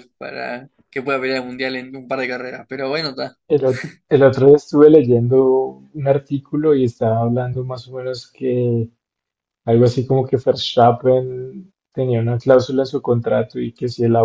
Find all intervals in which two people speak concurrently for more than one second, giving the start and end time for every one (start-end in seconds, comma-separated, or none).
none